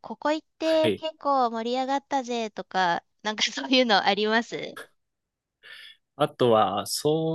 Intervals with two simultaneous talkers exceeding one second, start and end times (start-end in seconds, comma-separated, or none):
none